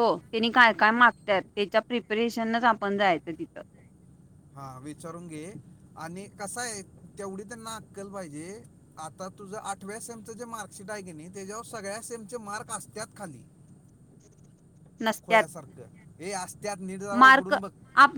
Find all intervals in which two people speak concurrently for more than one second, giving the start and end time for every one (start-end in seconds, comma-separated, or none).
none